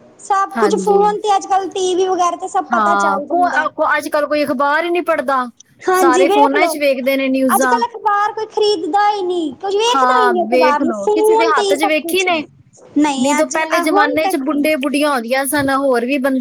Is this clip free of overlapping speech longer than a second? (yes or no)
no